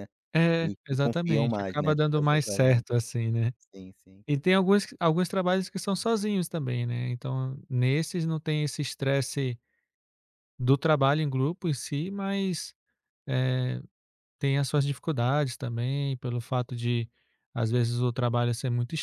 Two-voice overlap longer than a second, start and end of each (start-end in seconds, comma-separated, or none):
0.6-2.8